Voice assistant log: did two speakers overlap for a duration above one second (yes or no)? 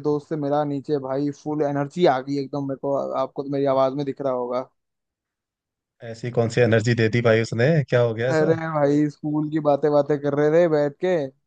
no